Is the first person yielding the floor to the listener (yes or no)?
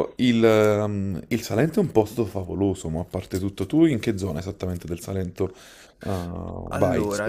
yes